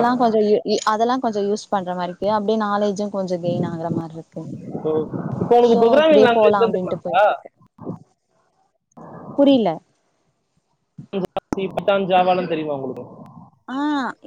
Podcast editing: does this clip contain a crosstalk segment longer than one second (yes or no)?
yes